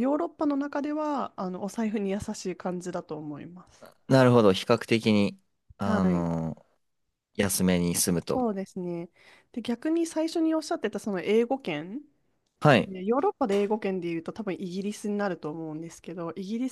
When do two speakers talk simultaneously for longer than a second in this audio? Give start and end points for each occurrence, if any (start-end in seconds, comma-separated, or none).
none